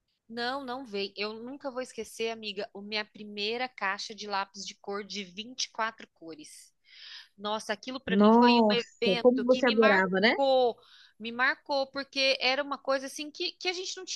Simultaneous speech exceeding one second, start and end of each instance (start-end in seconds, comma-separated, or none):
8.1-10.3